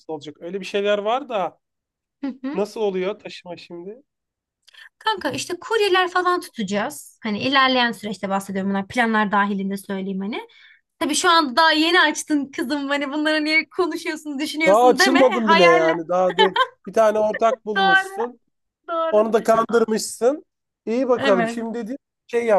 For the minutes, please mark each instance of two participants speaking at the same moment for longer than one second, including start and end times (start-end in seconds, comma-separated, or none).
14.7-16.0